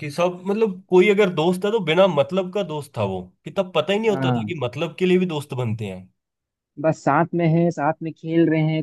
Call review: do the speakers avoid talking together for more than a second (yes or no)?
yes